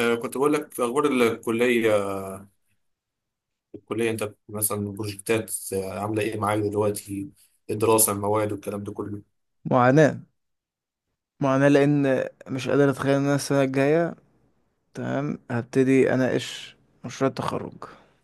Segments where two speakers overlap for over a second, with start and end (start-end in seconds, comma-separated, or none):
none